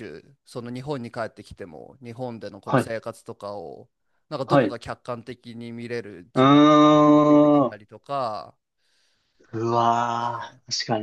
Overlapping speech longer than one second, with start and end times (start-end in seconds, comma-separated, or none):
6.3-7.8